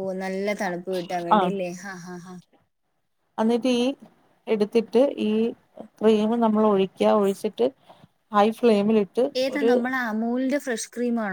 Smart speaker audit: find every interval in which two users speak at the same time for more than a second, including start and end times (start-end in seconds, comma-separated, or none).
none